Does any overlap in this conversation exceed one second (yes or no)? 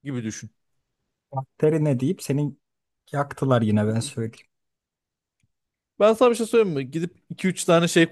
no